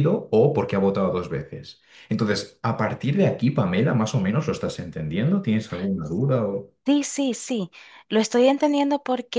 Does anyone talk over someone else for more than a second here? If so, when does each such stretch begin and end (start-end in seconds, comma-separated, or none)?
none